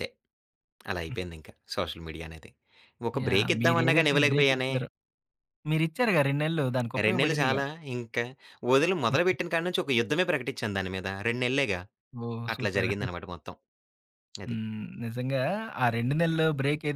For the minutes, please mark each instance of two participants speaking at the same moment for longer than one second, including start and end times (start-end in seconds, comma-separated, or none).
3.2-4.7